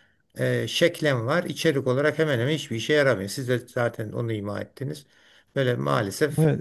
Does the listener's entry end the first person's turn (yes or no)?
yes